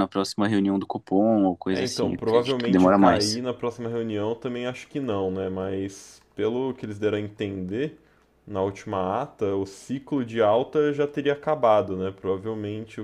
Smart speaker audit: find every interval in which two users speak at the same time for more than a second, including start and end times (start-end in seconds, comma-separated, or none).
1.7-3.4